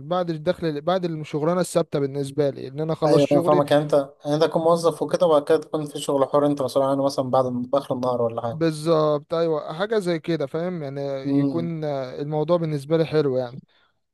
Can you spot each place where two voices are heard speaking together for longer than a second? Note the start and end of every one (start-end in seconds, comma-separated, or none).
none